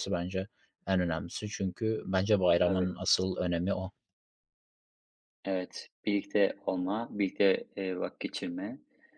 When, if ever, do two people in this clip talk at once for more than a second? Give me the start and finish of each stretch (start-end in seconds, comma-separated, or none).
none